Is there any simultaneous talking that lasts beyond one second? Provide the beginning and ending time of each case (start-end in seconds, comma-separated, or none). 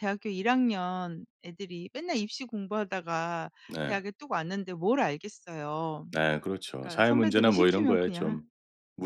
6.8-8.4